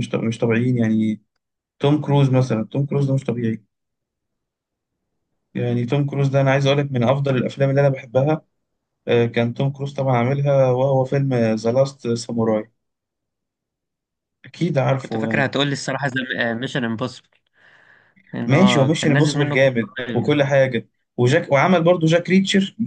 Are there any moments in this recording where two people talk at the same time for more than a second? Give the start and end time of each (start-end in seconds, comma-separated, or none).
18.4-20.6